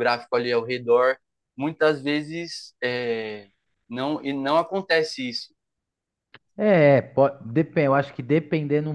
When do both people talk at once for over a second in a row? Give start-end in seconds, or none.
none